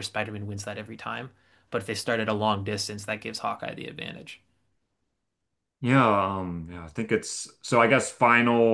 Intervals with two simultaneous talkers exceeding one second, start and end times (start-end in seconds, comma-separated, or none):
none